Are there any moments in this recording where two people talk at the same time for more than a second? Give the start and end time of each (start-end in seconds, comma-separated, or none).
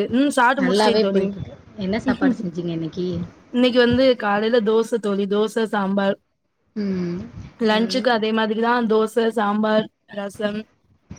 0.6-2.4